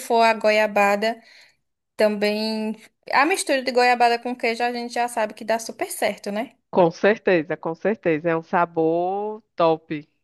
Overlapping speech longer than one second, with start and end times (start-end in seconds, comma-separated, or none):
none